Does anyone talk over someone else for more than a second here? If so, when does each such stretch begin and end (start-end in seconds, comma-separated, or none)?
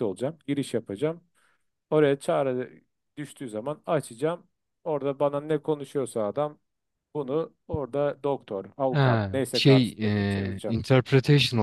8.9-10.8